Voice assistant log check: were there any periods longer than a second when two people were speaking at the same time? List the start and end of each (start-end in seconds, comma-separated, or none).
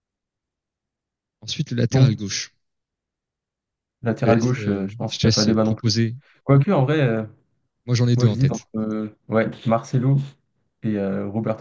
4.2-5.9